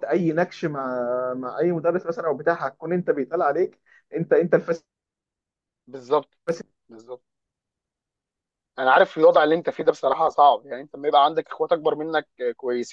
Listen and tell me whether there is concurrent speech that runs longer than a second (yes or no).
no